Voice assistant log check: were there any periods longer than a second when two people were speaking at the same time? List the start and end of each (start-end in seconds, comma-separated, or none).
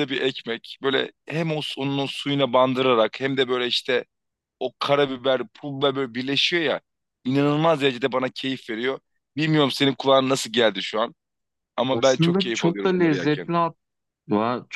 11.9-13.5